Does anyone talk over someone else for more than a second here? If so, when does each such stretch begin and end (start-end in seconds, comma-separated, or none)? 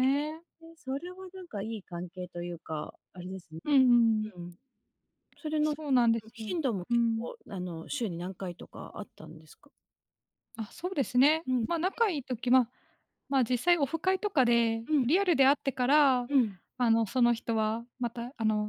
5.6-7.3